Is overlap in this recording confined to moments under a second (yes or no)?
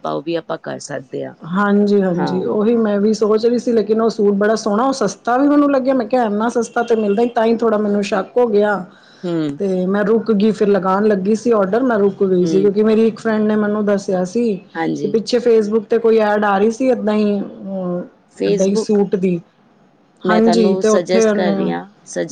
no